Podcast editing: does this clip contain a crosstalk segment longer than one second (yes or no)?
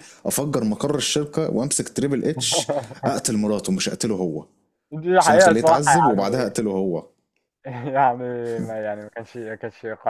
yes